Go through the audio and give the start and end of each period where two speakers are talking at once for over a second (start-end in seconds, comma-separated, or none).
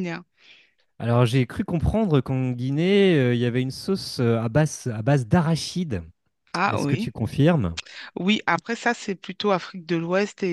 none